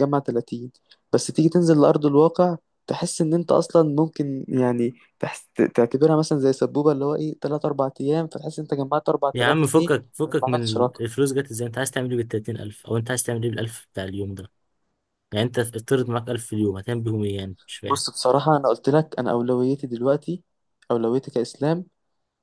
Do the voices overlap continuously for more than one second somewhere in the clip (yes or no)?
yes